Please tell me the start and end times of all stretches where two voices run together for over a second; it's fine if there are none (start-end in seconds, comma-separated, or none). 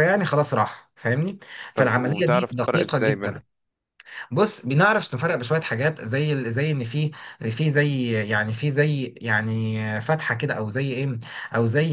1.8-3.4